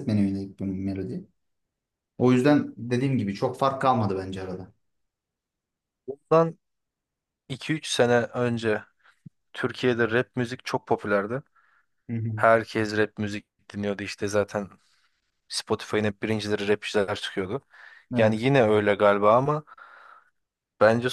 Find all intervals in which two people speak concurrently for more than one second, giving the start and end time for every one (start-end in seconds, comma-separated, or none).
none